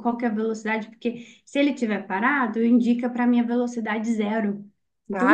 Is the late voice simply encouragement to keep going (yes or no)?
no